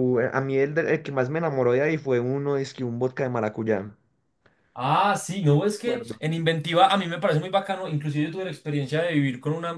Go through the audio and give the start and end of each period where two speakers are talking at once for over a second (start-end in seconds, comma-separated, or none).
none